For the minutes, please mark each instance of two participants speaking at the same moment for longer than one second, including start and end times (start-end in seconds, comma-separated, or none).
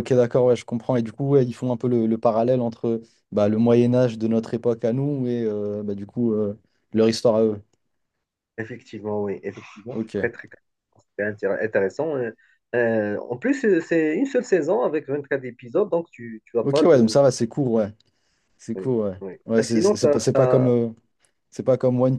18.8-20.7